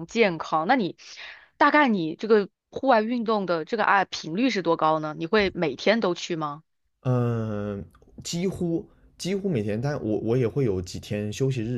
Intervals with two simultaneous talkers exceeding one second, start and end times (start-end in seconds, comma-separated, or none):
none